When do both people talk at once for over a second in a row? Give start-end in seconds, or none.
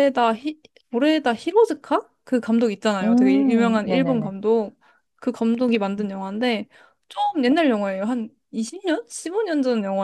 3.0-4.3